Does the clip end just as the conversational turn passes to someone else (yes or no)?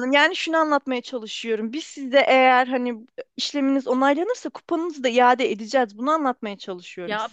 yes